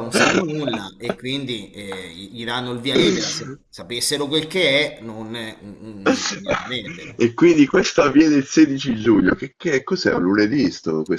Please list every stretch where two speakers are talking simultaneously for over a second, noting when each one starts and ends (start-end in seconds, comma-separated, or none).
none